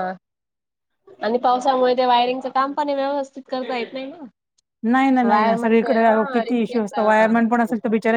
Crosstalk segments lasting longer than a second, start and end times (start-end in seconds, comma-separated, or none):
5.3-7.4